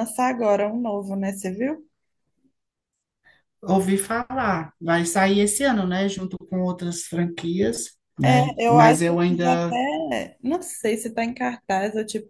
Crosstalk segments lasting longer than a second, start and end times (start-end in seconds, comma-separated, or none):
8.2-9.8